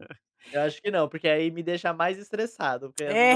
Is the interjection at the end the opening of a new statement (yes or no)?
no